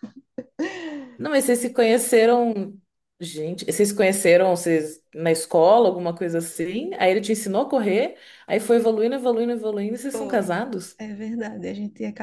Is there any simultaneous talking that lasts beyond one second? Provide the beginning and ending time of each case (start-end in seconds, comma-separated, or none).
none